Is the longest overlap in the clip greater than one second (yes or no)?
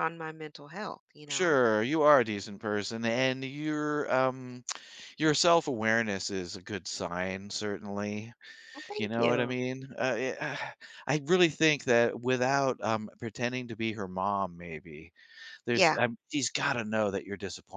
no